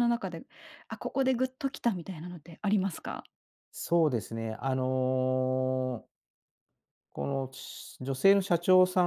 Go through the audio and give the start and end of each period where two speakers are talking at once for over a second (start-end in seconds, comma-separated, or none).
none